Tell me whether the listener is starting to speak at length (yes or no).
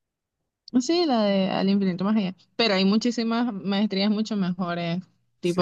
yes